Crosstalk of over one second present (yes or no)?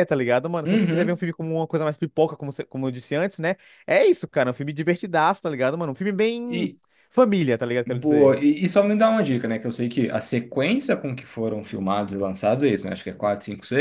no